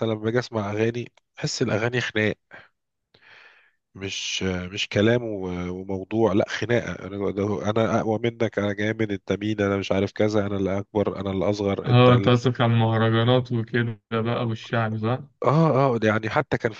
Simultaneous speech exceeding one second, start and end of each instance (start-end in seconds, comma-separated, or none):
none